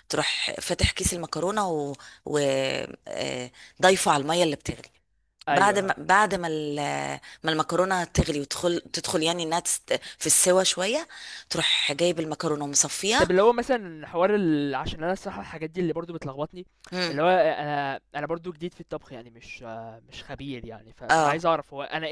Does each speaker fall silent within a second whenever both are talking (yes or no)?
yes